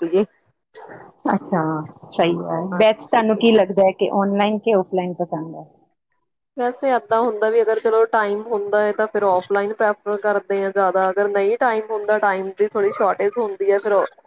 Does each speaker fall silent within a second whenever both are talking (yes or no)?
yes